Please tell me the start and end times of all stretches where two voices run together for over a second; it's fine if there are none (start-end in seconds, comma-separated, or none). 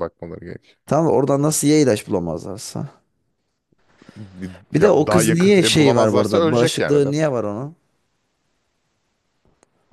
4.7-7.1